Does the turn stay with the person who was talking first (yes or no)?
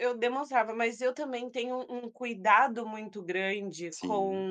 yes